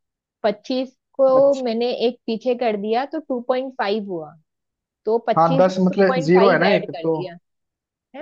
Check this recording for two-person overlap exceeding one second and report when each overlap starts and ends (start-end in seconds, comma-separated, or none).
5.4-7.2